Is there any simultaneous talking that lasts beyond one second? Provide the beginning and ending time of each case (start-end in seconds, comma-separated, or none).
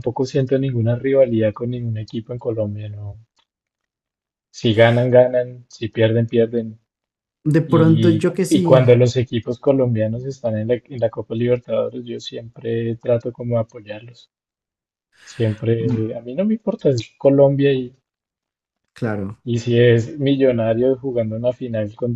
7.7-9.0